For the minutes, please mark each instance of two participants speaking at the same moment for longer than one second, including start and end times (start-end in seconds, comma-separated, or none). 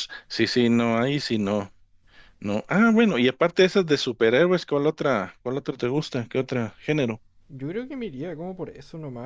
none